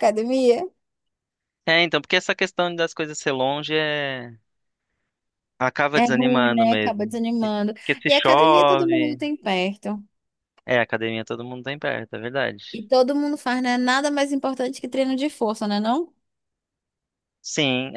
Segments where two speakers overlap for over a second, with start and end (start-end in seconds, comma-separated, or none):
5.9-9.2